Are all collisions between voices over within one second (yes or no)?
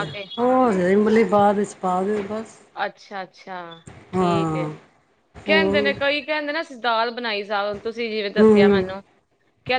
yes